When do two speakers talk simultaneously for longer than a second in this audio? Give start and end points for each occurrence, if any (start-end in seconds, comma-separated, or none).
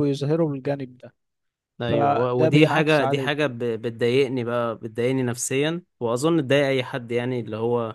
1.9-3.5